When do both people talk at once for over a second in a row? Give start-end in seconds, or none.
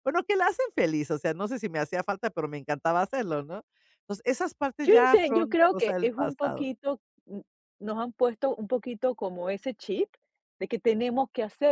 4.8-6.7